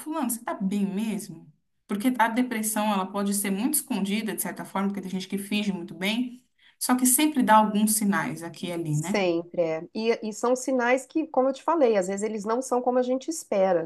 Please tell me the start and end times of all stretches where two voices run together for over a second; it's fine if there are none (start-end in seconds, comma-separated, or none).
none